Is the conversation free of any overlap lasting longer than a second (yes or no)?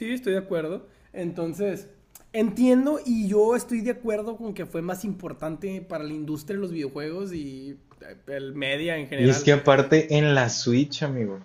yes